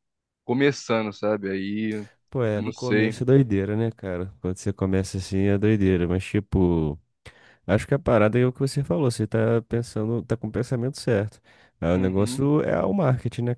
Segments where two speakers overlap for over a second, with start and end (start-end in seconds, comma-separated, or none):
none